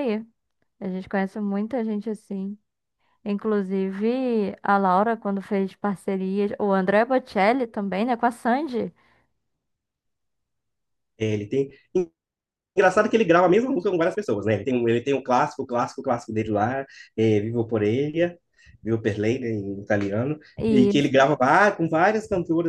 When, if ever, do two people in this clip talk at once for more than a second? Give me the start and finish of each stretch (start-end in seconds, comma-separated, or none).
none